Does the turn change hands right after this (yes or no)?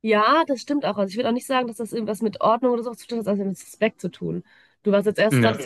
no